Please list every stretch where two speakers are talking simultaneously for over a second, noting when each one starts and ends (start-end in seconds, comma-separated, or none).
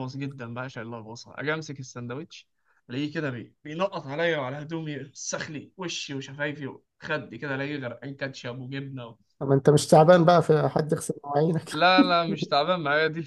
none